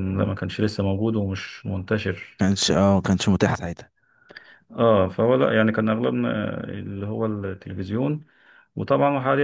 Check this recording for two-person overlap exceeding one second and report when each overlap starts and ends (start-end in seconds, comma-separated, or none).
none